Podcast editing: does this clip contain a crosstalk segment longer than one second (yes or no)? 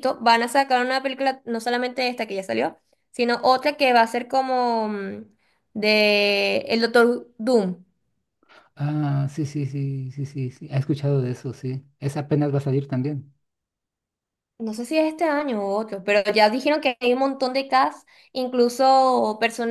no